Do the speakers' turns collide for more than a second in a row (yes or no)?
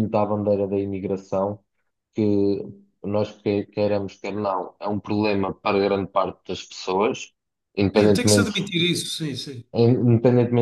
no